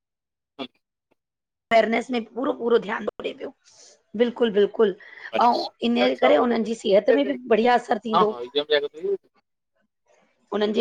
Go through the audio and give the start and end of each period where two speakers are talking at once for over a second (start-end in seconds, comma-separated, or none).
5.5-7.5